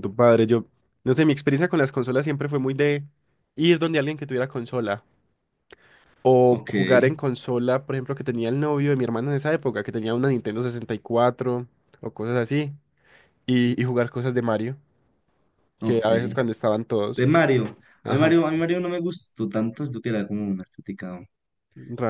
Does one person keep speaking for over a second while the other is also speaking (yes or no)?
no